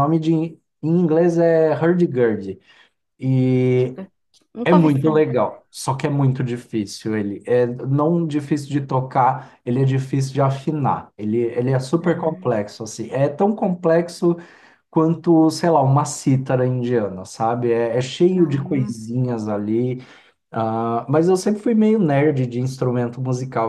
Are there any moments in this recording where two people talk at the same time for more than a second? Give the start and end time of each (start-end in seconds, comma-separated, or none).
none